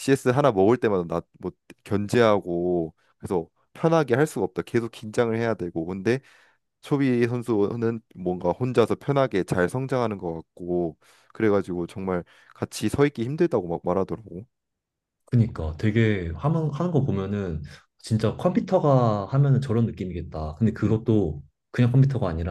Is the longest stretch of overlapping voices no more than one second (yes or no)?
yes